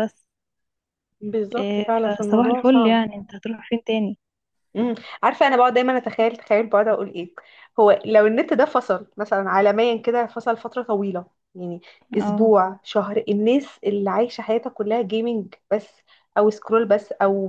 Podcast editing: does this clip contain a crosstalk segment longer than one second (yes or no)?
yes